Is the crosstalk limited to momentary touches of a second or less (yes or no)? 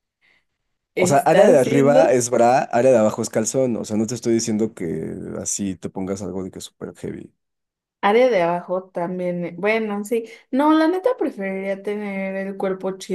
no